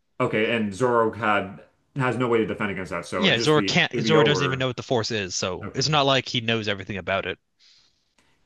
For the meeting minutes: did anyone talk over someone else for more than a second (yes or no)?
yes